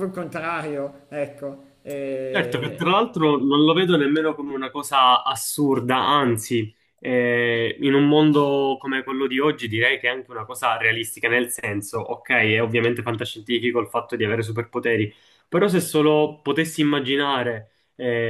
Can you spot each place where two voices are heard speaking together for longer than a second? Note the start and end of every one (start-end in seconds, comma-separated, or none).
none